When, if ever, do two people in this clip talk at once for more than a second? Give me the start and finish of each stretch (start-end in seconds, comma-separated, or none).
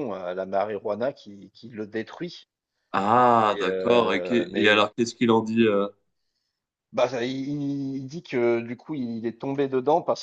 3.5-4.9